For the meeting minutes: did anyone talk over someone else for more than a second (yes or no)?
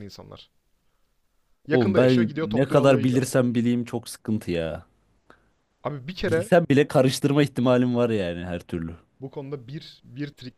yes